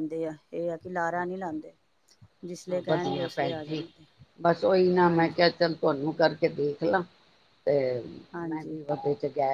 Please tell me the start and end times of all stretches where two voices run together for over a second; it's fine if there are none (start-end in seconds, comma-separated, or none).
none